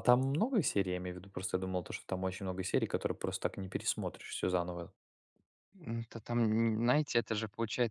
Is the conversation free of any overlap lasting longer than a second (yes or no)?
yes